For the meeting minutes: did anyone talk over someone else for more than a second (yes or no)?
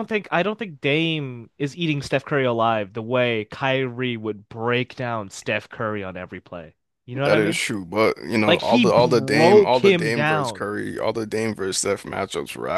yes